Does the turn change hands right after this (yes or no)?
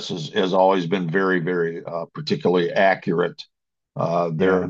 no